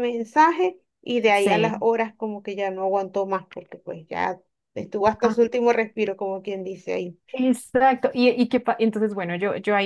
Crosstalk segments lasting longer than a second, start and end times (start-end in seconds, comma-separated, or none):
none